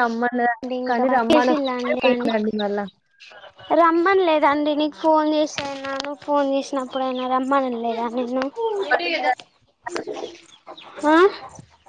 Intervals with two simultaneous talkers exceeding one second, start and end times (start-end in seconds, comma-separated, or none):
0.6-2.3